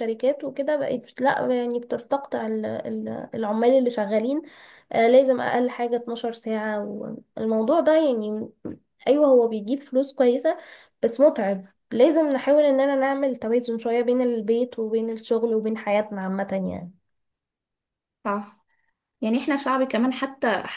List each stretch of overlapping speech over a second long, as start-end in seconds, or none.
none